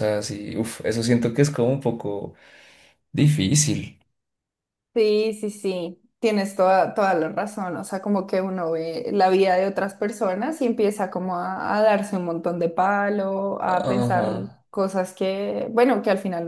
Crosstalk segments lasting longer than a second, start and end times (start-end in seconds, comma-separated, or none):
none